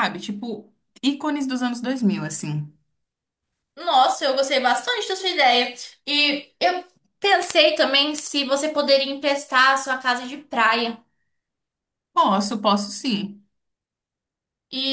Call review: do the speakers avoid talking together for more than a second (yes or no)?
yes